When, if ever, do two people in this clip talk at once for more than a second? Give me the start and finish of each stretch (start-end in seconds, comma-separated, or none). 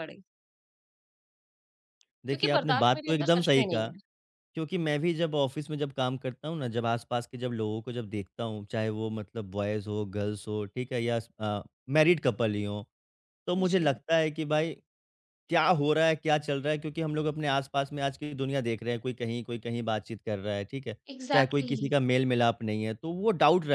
2.3-3.9